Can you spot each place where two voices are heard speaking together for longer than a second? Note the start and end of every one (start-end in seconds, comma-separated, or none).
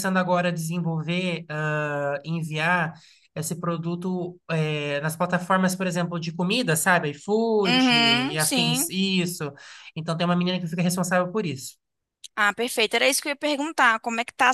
7.6-8.9